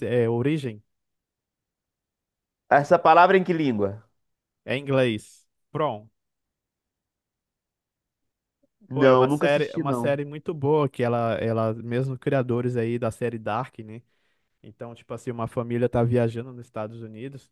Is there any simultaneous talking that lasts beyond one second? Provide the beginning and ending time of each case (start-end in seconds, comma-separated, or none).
8.9-10.1